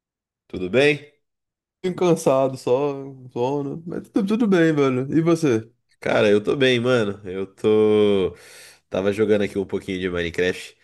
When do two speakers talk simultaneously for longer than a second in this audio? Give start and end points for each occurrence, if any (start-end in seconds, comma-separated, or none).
none